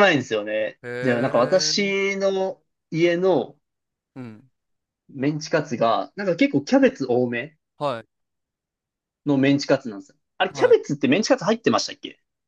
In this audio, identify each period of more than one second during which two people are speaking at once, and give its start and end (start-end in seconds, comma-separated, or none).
0.8-2.1